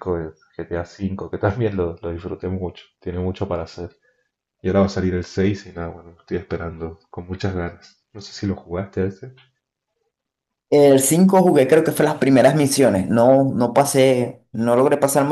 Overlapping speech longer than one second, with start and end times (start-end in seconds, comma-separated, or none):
none